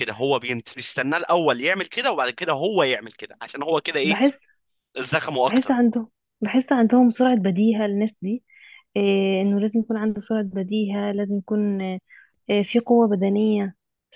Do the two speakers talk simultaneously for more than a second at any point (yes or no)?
no